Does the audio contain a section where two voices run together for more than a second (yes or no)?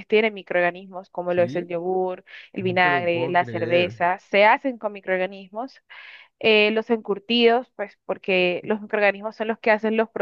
yes